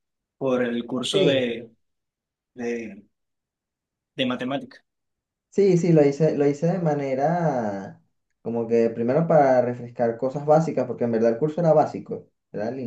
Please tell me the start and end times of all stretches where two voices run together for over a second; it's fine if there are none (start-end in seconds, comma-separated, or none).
none